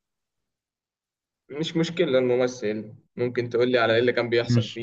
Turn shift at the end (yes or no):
yes